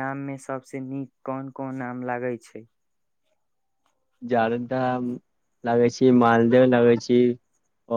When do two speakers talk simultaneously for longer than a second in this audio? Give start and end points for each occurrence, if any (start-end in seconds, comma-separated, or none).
none